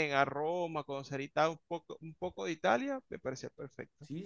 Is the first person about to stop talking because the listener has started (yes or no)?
yes